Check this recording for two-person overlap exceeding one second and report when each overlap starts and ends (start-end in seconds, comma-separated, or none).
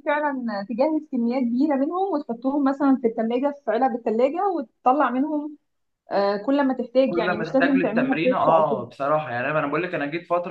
7.0-8.8